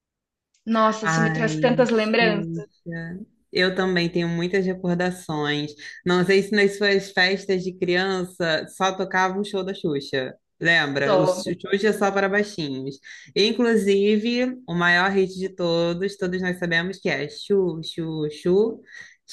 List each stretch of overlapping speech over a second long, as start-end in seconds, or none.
1.0-2.7